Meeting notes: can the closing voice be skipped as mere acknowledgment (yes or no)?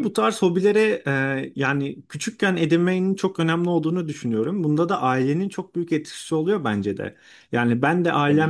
yes